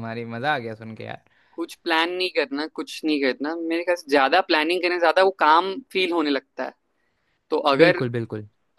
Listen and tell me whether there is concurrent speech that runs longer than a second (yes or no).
no